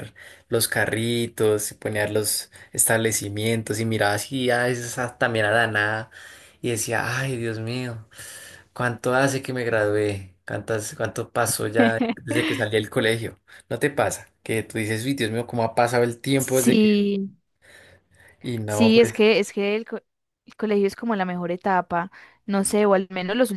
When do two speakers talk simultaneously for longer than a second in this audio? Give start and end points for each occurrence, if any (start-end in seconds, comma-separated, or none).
none